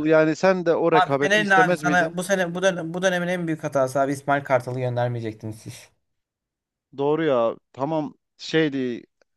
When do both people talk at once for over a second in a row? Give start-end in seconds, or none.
0.9-2.2